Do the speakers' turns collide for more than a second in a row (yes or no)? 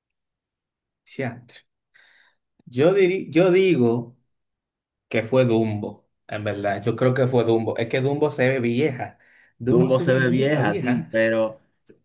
yes